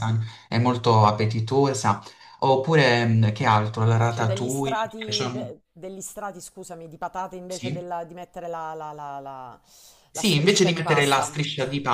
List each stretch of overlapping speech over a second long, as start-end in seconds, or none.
4.1-5.5, 10.1-11.3